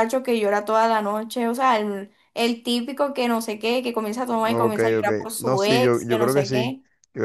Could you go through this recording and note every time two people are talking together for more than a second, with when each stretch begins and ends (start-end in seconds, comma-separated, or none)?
4.4-6.8